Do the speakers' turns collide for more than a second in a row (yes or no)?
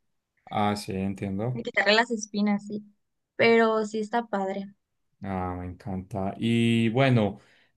no